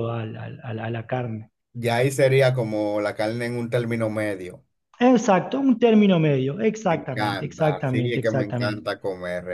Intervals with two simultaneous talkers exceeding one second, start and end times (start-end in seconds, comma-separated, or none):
6.9-8.8